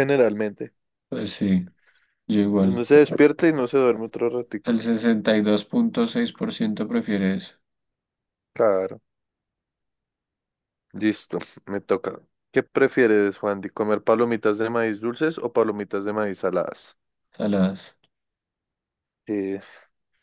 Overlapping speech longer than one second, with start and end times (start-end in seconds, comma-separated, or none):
none